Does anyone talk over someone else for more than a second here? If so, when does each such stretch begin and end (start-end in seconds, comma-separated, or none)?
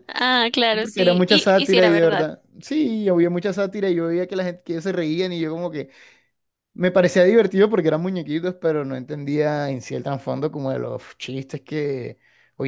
0.7-2.3